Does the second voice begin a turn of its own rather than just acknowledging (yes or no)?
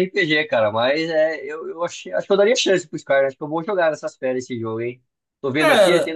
yes